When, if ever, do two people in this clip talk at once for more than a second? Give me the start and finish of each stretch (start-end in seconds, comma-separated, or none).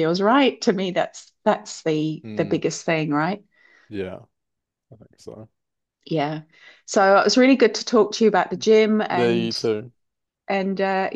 none